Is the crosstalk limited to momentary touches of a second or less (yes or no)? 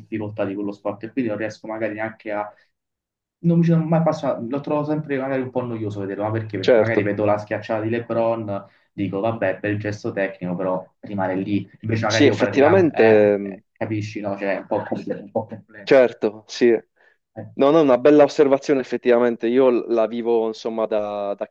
no